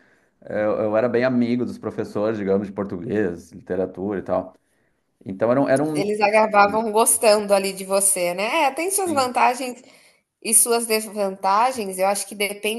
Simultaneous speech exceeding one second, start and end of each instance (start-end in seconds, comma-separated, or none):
none